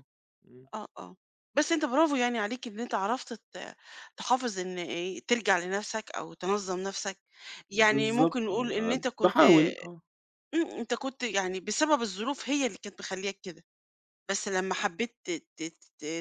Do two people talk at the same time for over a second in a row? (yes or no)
yes